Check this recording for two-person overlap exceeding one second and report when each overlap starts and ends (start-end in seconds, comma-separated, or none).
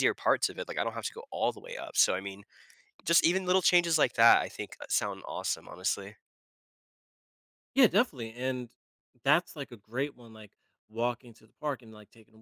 none